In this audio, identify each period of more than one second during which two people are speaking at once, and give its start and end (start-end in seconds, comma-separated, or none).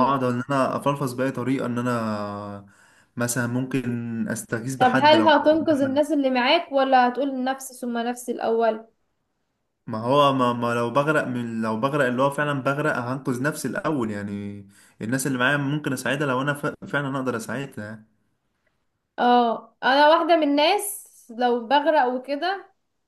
4.8-6.0